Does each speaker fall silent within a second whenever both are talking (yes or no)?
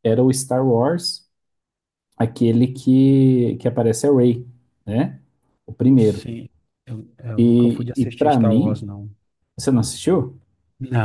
no